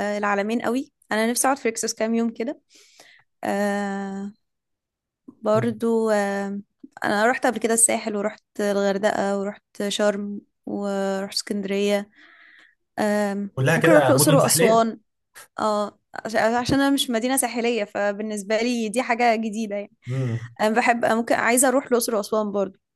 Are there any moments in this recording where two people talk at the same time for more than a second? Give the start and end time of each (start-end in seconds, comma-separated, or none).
13.5-14.9